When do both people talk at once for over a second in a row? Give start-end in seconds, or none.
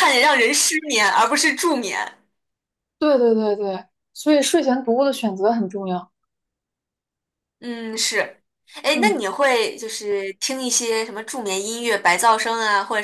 none